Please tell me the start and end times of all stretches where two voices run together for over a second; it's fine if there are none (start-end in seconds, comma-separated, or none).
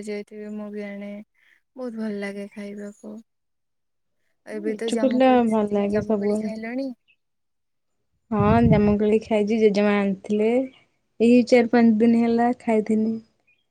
4.7-6.5